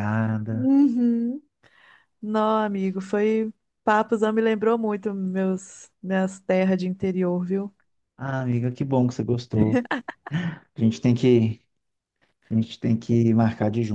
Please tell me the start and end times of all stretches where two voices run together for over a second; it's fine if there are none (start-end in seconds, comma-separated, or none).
none